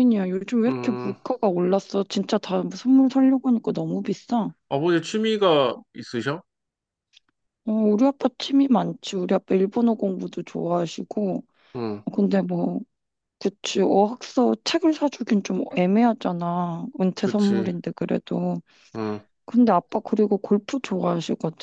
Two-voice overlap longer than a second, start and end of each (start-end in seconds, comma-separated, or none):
none